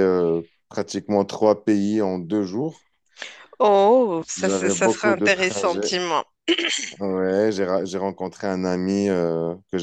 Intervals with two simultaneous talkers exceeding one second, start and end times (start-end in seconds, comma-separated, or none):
4.4-6.0